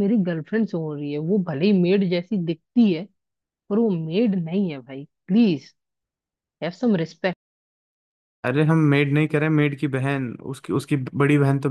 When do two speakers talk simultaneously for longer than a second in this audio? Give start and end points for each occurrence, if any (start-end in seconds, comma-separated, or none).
none